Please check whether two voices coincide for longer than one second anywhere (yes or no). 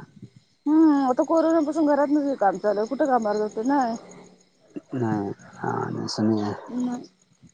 no